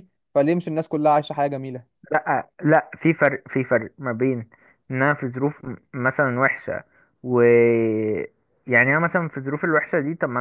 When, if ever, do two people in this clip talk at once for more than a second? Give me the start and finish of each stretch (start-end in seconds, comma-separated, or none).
none